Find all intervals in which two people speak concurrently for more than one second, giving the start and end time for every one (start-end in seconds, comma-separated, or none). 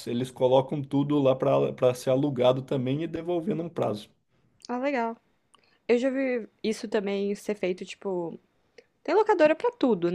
none